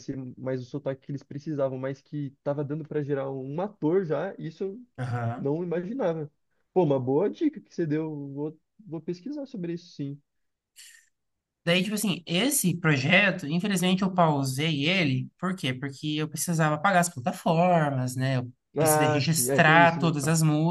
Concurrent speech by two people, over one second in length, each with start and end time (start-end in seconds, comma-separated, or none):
18.8-20.1